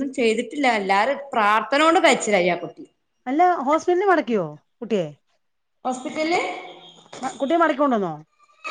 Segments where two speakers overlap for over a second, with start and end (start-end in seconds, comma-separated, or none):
none